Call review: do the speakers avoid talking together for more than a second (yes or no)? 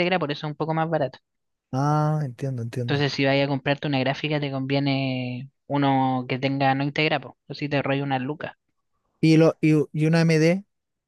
yes